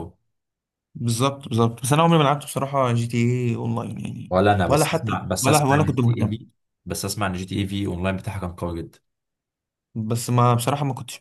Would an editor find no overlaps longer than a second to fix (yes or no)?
no